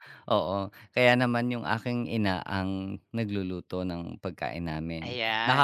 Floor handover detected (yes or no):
no